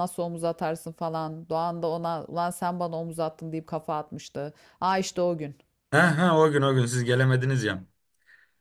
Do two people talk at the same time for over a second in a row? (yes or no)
no